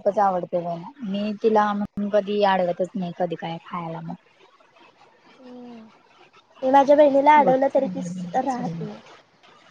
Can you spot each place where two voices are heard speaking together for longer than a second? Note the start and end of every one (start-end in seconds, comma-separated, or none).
7.5-8.8